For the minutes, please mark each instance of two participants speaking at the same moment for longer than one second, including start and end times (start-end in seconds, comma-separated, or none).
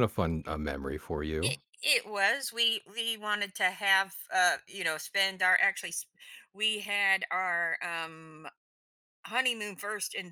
none